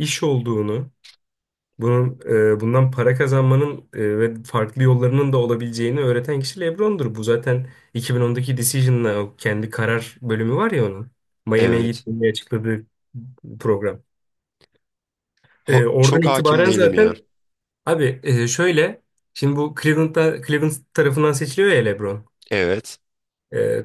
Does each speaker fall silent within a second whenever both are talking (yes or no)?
no